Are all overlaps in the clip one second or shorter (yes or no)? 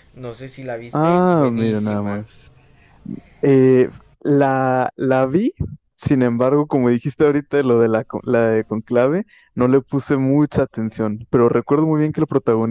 no